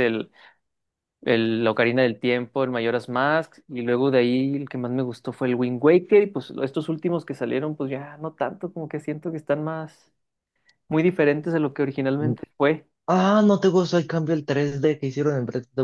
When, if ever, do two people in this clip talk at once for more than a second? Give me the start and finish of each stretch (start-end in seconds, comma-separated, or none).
none